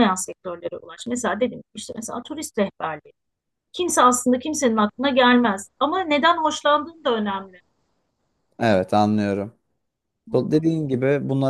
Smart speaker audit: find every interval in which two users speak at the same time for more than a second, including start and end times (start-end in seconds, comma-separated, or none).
none